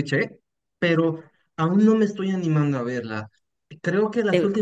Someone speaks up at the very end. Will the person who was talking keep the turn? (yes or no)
yes